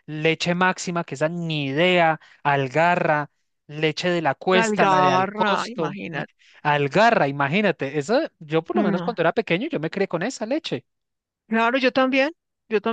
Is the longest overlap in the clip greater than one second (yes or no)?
yes